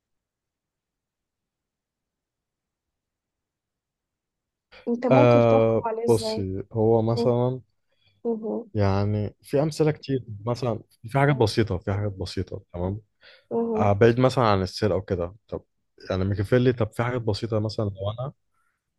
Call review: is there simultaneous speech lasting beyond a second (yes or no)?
yes